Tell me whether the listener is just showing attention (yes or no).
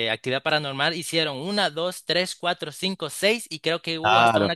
no